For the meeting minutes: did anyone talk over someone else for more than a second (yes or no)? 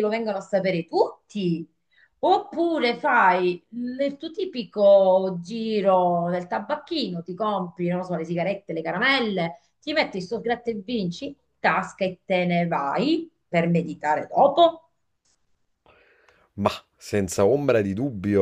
no